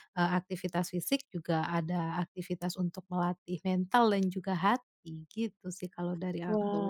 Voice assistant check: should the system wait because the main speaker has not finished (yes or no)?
no